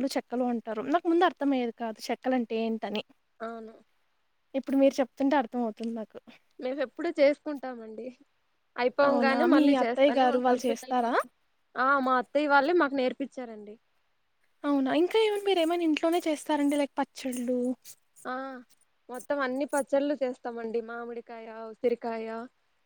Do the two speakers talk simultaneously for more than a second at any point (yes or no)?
yes